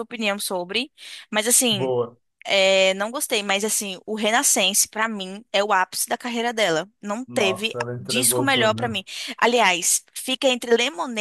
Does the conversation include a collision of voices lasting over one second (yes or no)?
yes